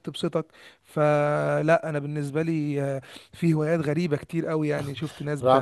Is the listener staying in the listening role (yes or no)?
no